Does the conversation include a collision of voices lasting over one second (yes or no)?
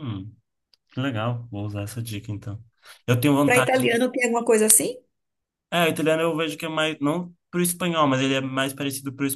no